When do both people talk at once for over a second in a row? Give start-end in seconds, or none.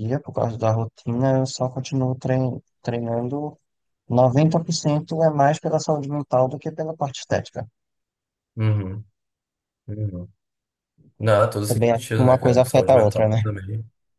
11.7-13.4